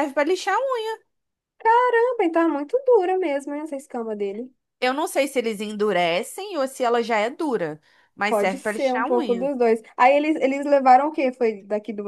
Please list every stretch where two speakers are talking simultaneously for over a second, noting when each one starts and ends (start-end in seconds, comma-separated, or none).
8.3-9.5